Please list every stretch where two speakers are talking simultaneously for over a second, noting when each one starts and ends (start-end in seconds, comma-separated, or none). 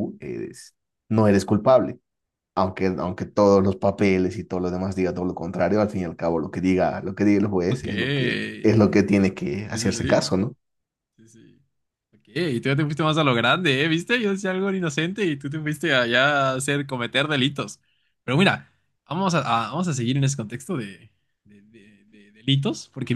7.7-9.1